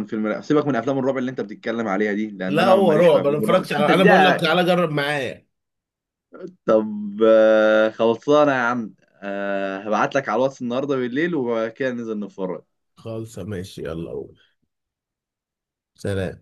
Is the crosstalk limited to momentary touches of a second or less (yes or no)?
no